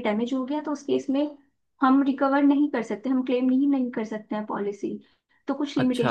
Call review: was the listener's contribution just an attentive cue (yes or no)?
yes